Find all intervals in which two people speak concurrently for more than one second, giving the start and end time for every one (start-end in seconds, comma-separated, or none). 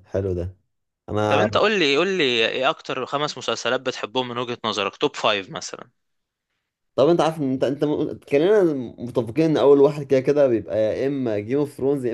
none